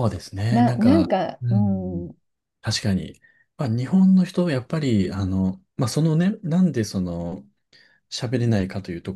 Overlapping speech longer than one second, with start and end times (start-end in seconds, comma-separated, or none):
0.5-2.1